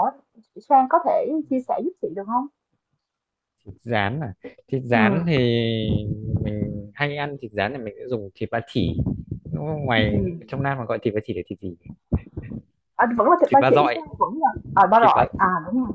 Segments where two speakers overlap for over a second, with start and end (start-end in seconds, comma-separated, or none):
none